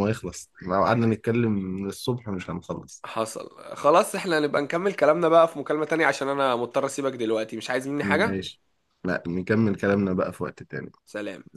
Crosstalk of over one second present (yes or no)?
no